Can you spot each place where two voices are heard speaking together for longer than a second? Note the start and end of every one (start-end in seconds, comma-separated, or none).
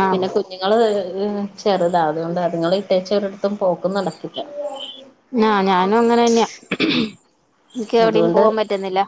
none